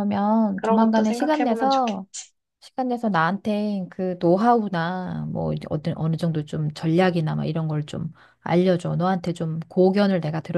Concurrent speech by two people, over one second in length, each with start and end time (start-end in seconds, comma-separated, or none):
0.6-2.0